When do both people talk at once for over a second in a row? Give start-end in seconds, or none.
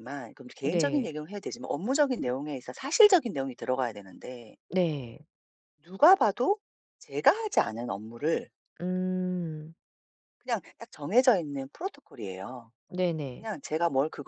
none